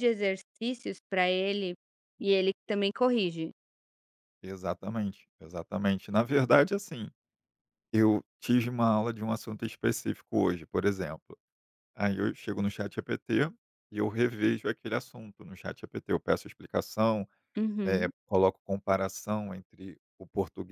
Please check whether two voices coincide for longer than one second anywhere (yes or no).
no